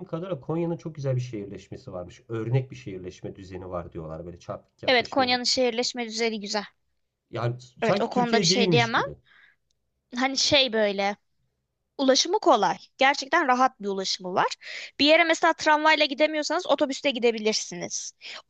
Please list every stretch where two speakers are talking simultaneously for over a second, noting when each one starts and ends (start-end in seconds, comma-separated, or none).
7.8-9.0